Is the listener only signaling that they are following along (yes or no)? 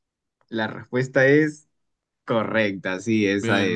no